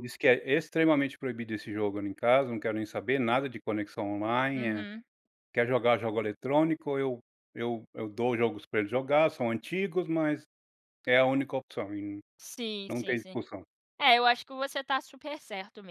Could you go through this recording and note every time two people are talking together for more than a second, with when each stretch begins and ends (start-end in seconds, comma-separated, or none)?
none